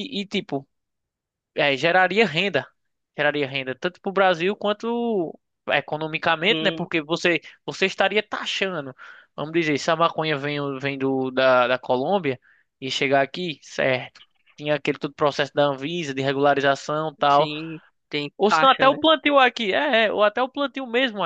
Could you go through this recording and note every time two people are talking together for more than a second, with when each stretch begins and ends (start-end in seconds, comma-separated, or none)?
none